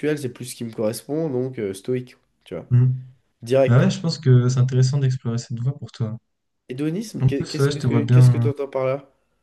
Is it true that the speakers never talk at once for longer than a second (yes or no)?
no